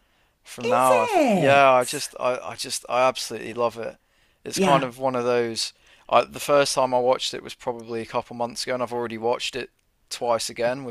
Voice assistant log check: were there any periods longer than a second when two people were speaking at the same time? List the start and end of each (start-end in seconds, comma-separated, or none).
0.6-2.1